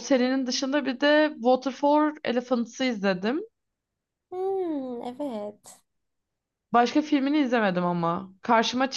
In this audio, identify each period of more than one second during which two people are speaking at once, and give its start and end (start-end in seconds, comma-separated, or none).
none